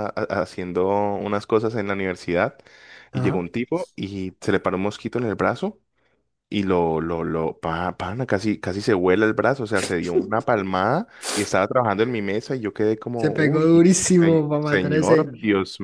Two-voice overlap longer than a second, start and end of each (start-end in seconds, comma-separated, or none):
13.2-15.3